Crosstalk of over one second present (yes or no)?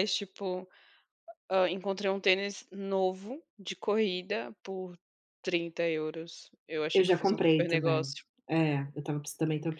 yes